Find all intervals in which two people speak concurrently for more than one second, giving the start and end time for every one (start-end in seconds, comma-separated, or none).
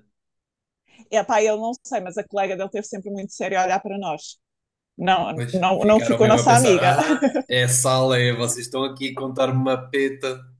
5.3-7.0